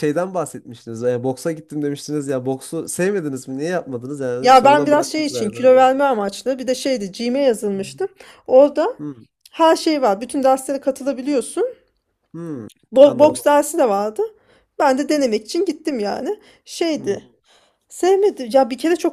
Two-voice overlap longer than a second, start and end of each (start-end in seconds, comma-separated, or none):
4.4-5.7